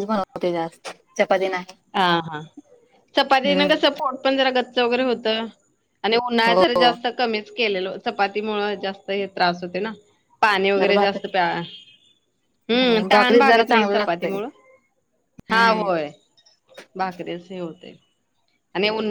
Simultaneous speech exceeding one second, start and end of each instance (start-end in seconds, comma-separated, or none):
12.8-14.4